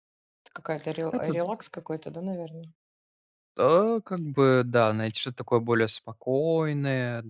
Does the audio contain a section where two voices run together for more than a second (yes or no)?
no